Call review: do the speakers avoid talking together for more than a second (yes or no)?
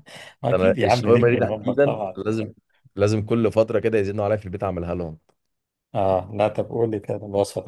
no